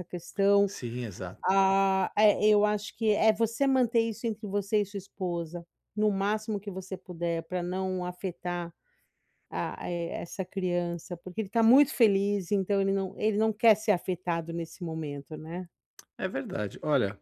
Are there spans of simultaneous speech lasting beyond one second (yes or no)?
no